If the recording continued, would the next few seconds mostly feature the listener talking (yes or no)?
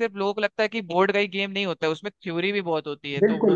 yes